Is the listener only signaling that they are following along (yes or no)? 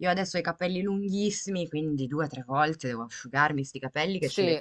yes